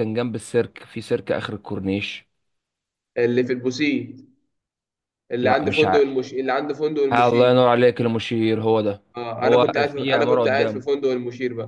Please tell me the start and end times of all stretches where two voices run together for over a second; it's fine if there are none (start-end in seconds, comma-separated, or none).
9.4-10.8